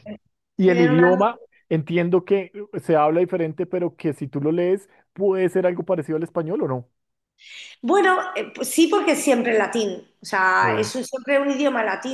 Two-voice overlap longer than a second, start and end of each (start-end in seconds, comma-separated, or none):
none